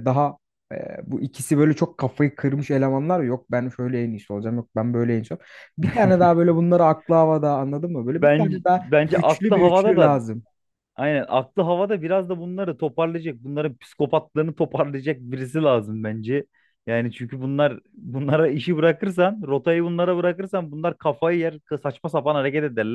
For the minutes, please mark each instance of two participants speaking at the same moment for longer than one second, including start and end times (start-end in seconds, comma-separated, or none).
8.1-10.2